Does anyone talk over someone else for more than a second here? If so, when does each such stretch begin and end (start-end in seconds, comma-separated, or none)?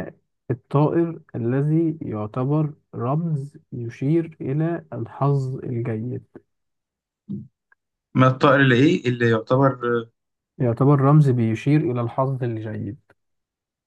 none